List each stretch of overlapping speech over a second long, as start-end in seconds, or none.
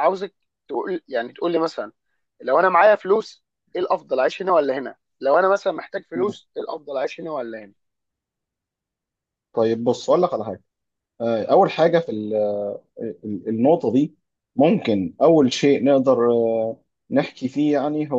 none